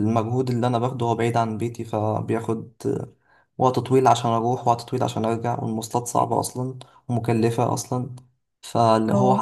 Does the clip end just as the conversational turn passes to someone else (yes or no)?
no